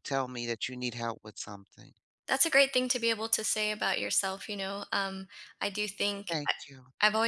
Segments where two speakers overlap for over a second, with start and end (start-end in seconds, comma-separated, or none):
none